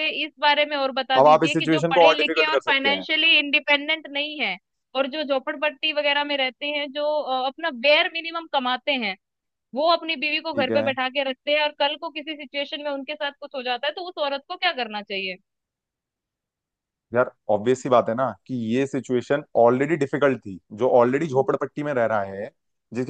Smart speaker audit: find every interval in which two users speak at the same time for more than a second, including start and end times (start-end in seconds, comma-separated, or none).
1.2-3.0